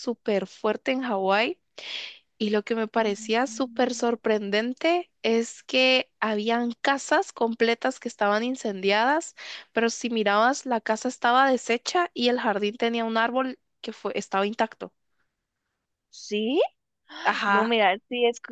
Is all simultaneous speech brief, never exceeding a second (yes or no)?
no